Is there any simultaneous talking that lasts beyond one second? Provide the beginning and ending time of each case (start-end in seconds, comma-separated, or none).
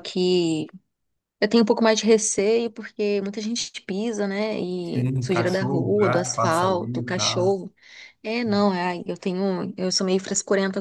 4.9-7.6